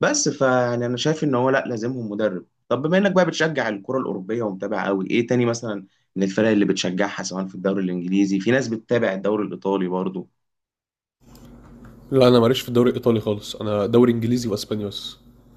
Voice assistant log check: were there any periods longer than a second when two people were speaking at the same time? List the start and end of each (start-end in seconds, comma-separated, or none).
none